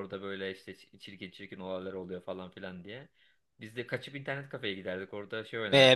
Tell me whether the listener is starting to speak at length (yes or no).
yes